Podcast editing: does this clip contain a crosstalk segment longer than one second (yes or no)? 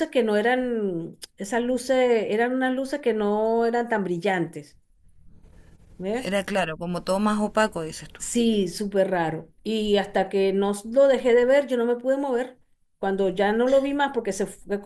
no